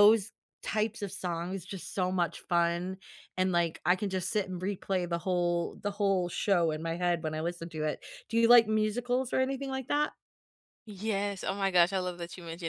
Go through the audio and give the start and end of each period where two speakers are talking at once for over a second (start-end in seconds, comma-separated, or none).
none